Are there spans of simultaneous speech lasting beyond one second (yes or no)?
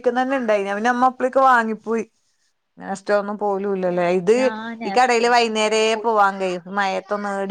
yes